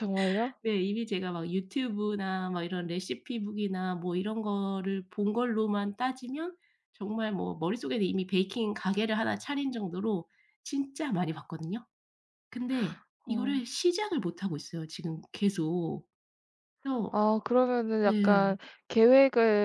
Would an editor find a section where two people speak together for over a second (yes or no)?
no